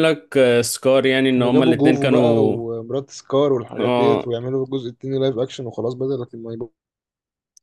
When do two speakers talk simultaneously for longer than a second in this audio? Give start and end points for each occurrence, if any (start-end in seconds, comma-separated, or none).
1.3-2.6